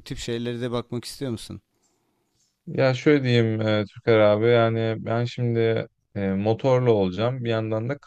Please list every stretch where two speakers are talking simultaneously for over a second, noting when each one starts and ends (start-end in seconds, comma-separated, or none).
none